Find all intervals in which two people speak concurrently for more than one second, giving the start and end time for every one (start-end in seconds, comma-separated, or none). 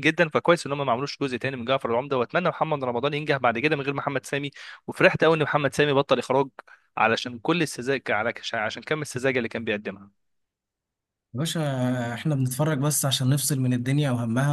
none